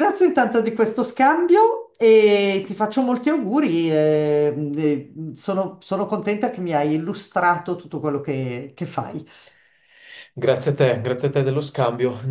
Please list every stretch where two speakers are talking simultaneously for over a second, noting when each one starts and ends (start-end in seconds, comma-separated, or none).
none